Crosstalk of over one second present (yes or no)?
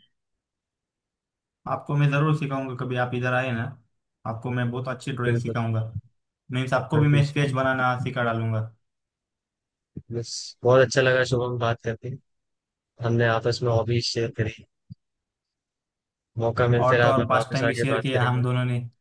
yes